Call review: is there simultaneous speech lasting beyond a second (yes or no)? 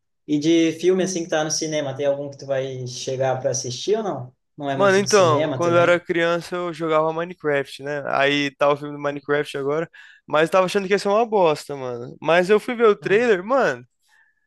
yes